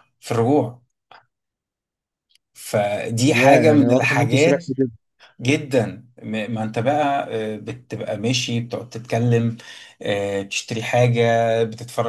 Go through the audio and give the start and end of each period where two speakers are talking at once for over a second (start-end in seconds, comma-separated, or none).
3.3-4.7